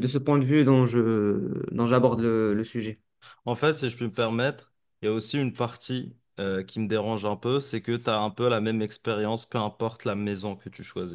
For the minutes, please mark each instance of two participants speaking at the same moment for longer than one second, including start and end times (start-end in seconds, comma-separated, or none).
none